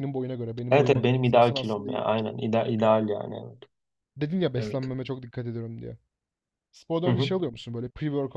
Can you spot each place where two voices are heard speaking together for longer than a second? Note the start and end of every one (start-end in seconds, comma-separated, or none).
0.7-2.0